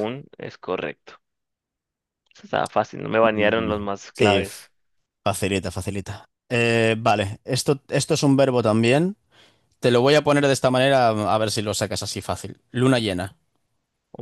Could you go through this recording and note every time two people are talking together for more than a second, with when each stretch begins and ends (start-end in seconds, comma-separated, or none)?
3.2-4.6